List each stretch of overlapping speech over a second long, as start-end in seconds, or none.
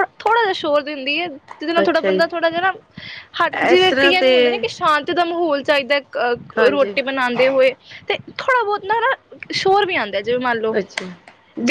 none